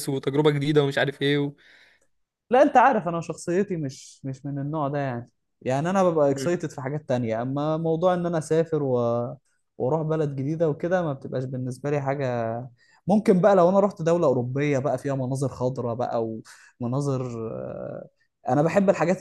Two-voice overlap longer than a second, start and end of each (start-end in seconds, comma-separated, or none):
none